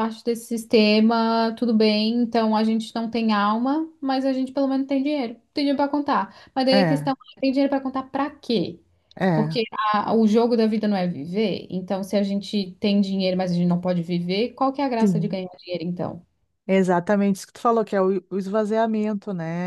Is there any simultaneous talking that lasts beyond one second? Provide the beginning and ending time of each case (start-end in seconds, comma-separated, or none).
none